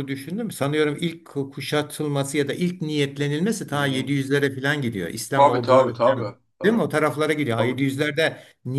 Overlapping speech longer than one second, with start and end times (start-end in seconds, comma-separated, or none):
5.3-6.8